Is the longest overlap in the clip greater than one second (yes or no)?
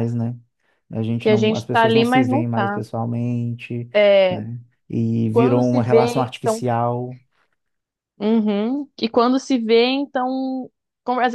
yes